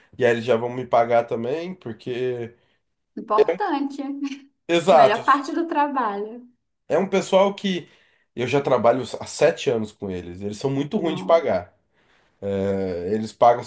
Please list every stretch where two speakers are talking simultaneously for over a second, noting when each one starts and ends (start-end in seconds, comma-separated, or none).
none